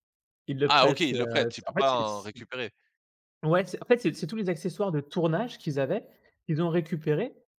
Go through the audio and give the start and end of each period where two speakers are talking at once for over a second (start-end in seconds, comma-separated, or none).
0.7-2.0